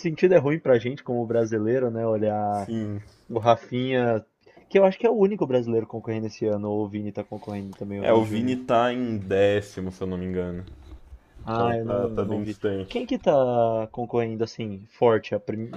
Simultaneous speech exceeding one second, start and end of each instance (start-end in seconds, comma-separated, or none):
11.5-13.1